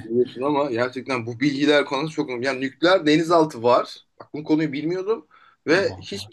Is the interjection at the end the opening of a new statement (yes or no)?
no